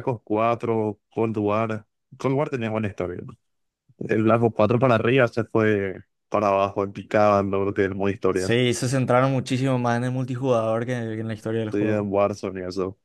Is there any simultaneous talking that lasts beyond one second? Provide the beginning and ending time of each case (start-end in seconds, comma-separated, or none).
none